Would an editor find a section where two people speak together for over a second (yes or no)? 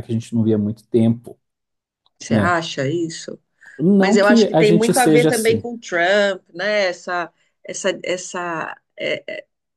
yes